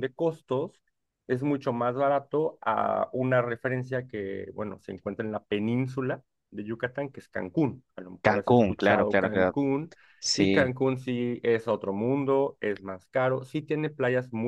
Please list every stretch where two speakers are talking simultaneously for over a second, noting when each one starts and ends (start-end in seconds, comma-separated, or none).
8.2-9.6